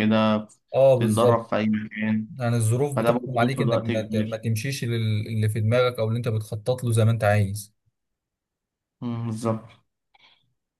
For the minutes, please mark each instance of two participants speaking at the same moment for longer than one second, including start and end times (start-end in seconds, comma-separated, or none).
3.0-4.4